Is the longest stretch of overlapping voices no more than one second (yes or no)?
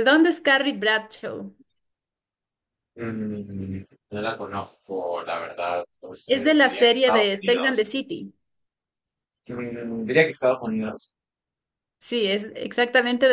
no